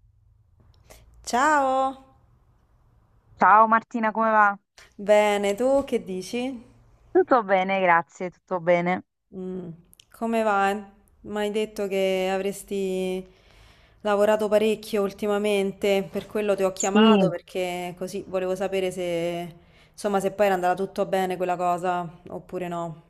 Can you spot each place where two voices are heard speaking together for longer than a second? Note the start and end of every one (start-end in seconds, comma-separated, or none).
none